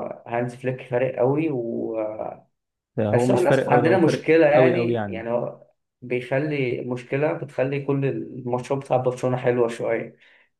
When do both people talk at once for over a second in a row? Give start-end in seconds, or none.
3.1-5.2